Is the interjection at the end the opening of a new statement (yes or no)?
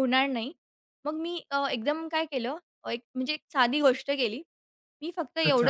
no